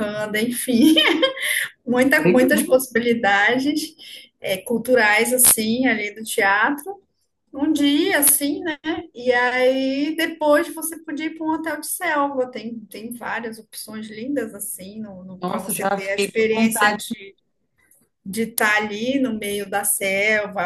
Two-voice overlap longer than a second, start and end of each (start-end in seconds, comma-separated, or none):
15.4-17.0